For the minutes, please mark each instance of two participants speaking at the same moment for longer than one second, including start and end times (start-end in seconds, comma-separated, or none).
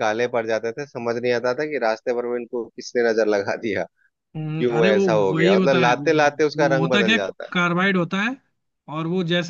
4.4-5.9